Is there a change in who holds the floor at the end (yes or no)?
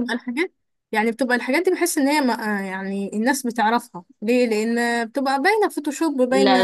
yes